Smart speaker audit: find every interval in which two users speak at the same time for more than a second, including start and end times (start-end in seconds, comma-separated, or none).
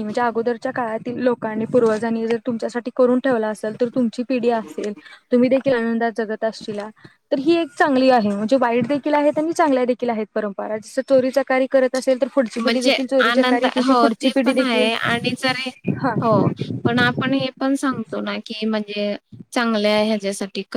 12.6-14.9